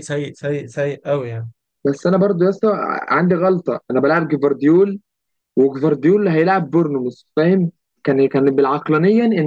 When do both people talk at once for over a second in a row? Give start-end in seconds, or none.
none